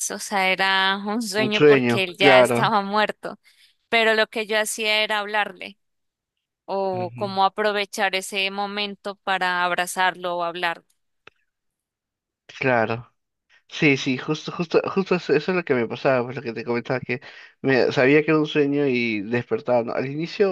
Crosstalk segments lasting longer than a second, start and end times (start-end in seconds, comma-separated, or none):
1.4-2.8